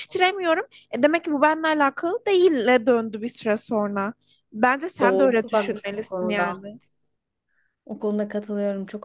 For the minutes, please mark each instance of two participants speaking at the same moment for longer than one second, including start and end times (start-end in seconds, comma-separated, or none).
5.0-6.6